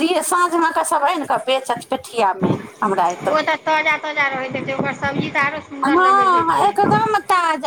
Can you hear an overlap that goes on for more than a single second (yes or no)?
no